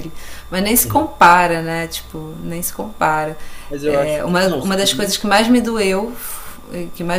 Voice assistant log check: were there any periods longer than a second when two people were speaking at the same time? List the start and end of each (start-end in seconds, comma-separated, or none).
3.9-5.2